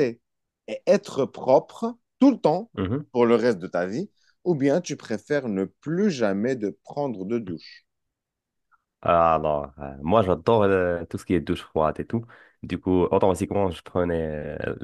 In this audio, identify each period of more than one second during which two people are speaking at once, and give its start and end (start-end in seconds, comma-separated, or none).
none